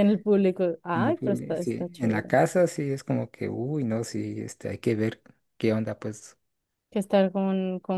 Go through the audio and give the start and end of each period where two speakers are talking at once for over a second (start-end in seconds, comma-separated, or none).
0.9-2.3